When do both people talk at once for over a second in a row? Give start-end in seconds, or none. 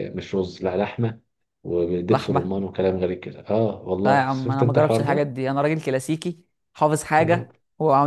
4.0-5.3